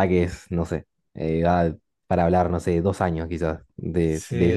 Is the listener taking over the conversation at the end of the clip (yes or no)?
yes